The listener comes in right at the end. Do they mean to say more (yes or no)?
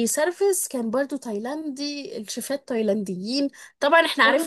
no